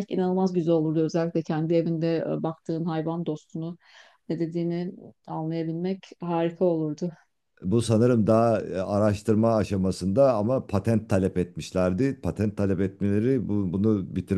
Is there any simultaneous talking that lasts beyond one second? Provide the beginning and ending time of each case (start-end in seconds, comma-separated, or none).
none